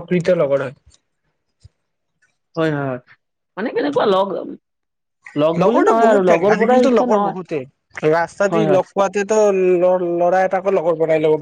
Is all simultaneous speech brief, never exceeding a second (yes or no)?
no